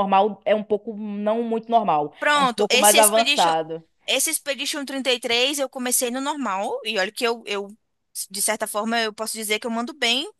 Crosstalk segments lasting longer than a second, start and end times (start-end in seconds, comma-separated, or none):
2.2-3.5